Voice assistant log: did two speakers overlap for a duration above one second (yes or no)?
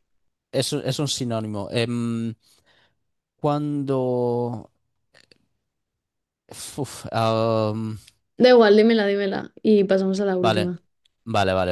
no